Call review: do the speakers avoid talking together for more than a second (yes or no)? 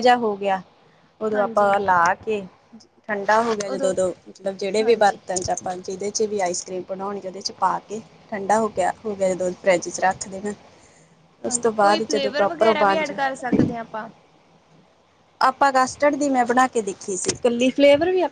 no